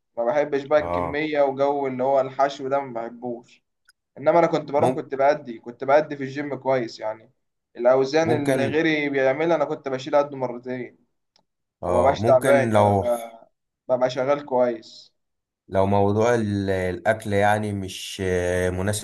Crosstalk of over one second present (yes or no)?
yes